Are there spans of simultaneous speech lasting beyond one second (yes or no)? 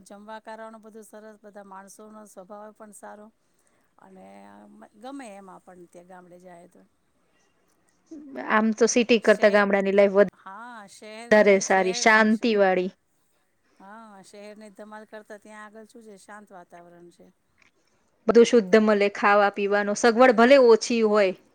yes